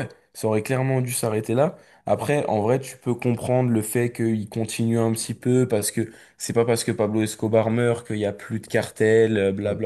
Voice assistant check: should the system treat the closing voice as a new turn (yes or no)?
no